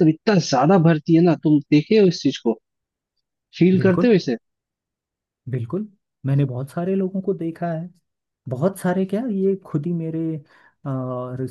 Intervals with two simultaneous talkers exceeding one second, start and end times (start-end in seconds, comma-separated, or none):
none